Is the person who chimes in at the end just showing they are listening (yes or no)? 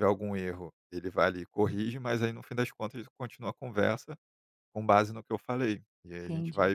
yes